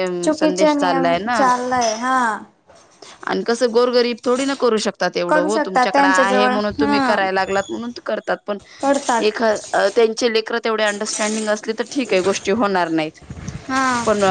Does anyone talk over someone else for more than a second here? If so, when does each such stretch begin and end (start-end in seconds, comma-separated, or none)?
5.3-7.2